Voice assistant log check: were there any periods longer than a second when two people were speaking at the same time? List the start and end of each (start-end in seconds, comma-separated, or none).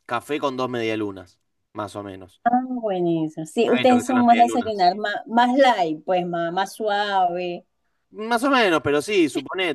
3.6-4.8